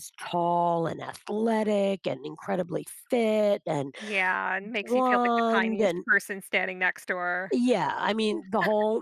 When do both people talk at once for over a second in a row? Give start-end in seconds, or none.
4.8-6.0